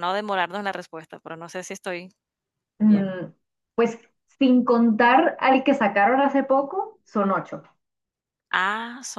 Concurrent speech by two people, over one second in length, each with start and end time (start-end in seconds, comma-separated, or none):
none